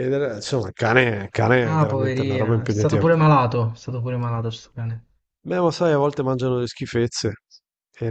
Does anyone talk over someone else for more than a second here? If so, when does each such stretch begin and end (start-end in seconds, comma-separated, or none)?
1.6-3.0